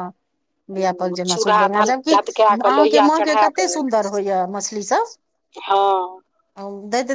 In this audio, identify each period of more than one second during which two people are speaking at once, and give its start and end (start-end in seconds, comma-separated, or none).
1.1-3.8